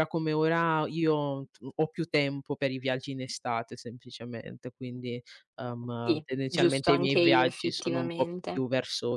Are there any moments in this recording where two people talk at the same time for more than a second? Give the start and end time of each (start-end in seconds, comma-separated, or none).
6.0-8.7